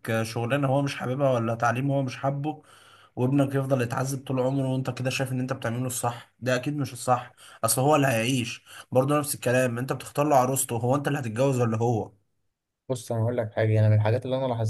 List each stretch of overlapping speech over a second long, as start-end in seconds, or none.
none